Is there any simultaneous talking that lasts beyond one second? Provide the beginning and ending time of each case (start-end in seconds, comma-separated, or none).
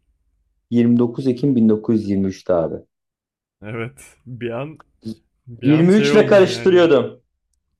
5.6-6.9